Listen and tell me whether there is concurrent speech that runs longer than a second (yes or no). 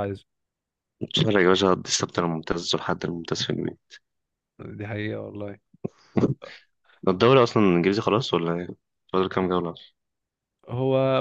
no